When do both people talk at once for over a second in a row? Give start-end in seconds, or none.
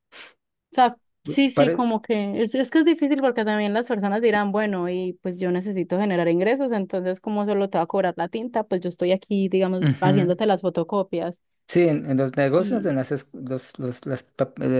none